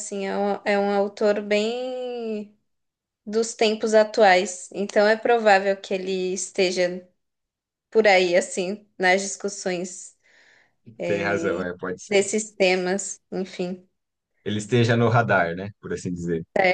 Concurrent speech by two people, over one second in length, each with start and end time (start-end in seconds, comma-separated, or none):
none